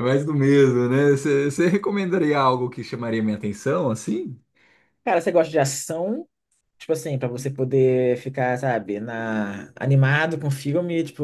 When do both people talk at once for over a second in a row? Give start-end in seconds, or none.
none